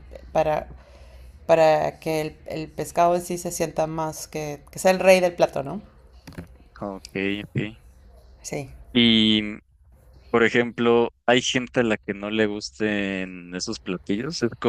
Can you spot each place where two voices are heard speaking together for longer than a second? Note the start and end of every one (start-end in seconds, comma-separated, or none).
none